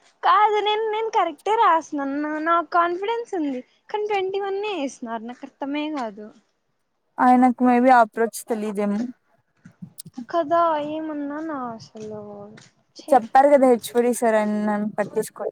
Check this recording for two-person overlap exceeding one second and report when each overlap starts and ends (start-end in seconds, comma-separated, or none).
none